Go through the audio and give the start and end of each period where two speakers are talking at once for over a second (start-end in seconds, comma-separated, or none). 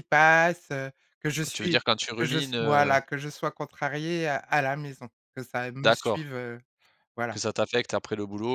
1.5-3.0